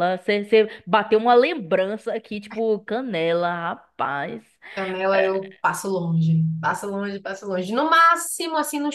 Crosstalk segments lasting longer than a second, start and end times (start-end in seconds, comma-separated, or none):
none